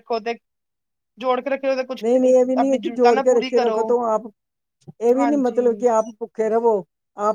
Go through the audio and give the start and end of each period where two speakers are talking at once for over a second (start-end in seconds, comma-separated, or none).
2.0-3.8